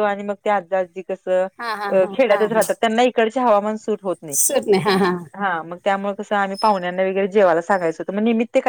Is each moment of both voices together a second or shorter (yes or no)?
yes